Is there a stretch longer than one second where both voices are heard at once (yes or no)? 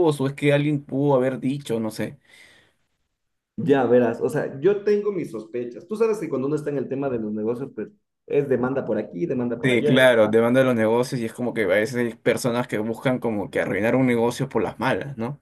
no